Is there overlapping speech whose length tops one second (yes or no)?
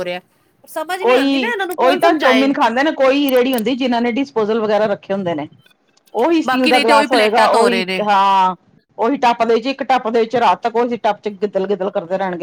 yes